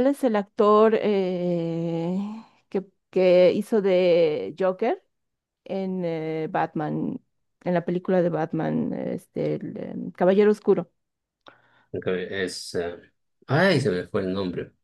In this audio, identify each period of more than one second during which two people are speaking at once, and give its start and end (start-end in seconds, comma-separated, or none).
none